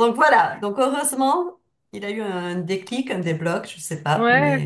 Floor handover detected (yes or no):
yes